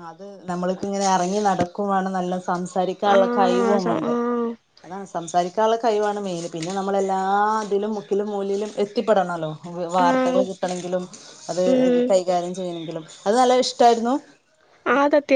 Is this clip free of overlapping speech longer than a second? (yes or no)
no